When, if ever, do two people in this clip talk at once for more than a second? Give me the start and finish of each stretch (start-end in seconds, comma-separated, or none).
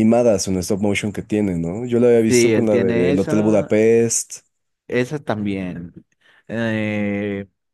2.3-3.7